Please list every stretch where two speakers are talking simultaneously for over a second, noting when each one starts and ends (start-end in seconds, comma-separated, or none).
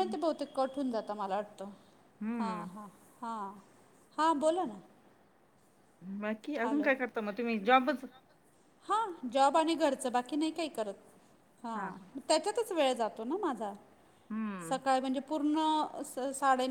none